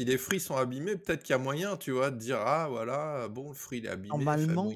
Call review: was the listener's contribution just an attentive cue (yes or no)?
no